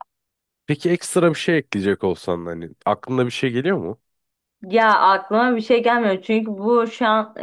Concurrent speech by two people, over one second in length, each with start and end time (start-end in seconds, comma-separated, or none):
none